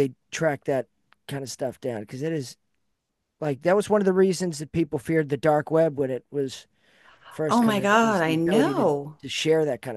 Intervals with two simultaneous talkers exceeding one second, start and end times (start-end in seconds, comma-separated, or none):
7.5-8.8